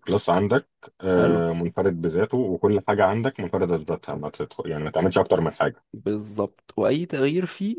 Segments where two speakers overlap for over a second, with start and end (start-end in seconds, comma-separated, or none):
none